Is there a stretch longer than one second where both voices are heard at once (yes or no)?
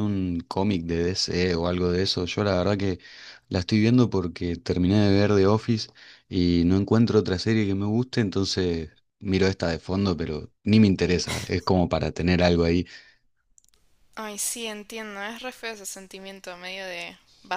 no